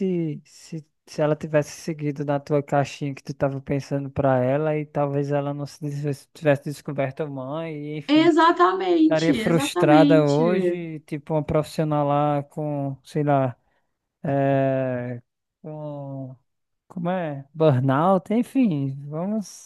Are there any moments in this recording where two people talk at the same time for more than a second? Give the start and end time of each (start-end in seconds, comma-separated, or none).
9.0-10.4